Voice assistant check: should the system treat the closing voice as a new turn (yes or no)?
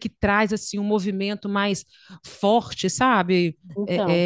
no